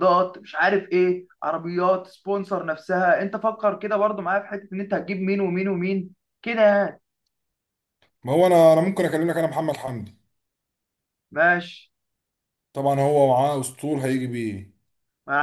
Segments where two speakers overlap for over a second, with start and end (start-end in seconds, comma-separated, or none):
none